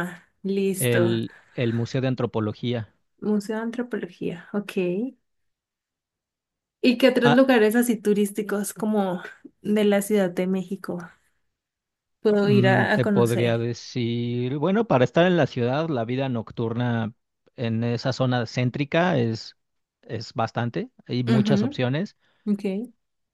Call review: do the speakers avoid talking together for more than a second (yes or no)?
no